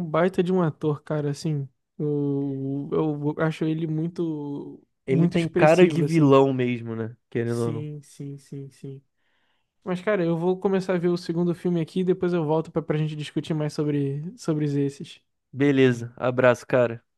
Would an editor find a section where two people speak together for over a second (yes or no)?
yes